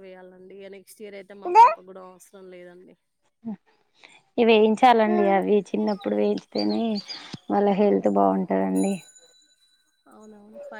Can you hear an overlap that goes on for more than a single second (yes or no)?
no